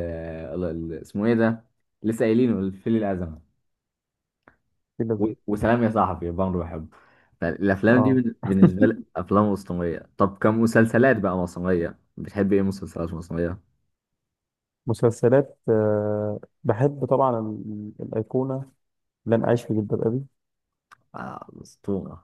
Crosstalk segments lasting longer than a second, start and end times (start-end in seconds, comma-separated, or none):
none